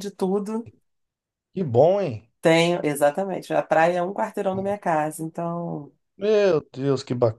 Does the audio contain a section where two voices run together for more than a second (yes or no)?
no